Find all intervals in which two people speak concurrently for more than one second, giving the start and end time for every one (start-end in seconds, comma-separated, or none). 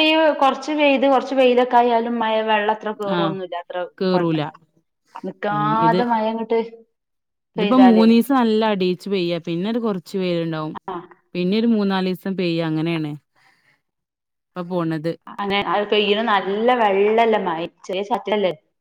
none